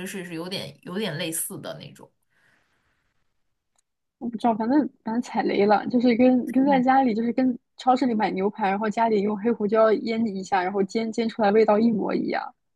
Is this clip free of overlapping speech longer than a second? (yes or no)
yes